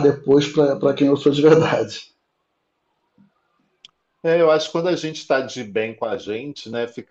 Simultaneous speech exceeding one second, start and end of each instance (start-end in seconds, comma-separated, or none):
none